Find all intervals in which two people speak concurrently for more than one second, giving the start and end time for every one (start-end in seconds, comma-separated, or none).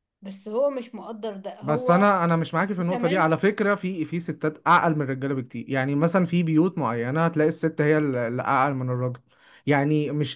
none